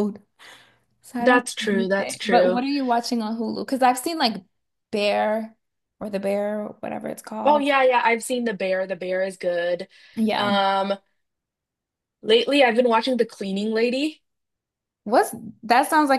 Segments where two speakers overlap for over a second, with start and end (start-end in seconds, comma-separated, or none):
1.2-2.6